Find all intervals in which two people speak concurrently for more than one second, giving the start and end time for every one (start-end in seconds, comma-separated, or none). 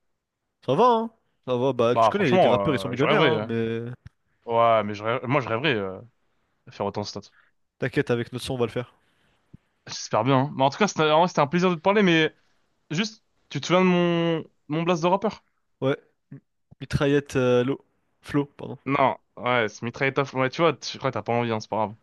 1.9-3.5